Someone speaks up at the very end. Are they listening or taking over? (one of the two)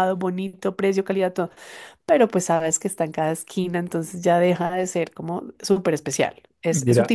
taking over